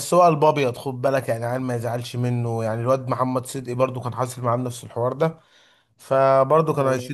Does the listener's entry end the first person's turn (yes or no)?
no